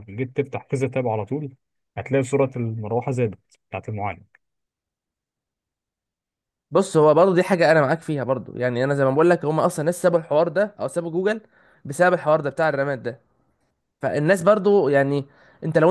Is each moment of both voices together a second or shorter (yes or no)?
yes